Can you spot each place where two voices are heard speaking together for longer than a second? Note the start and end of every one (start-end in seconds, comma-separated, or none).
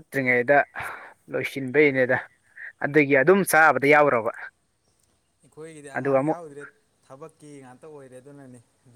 none